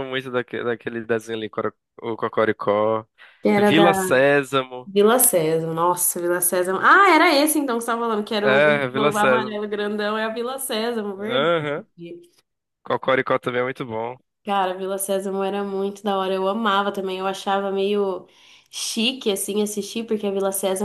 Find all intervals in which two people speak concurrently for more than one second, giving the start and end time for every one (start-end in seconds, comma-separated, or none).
8.4-9.6